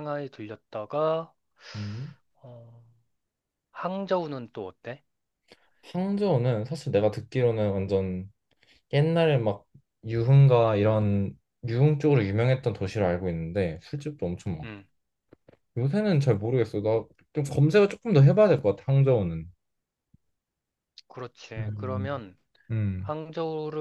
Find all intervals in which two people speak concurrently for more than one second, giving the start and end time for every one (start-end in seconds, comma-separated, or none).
none